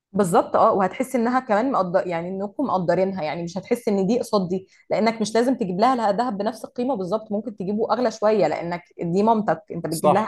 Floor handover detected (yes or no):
yes